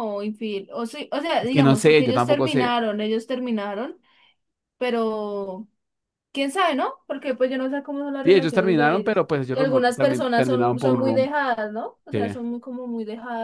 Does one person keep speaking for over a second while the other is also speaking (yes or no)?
yes